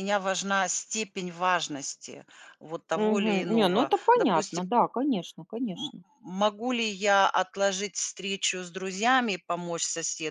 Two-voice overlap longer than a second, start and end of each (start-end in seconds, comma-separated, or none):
2.9-4.7